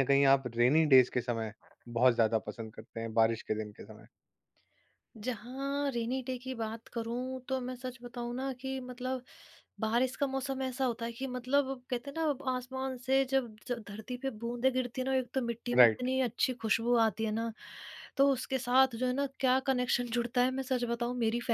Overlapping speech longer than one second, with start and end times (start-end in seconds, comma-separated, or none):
none